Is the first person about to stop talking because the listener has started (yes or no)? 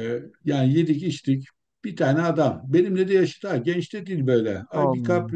no